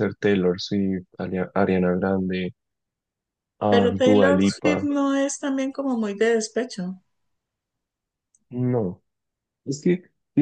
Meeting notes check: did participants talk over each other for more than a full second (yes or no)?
yes